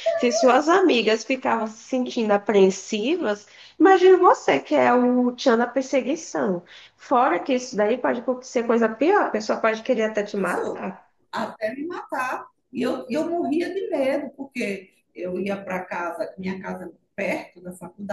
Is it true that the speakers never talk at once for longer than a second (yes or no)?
yes